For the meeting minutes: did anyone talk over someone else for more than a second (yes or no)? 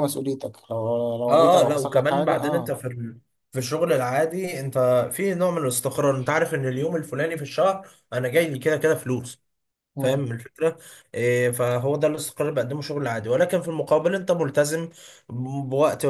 yes